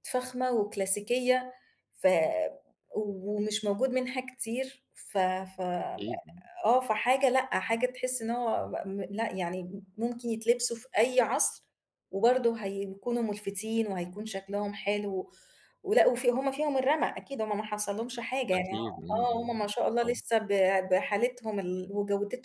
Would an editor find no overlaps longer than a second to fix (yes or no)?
no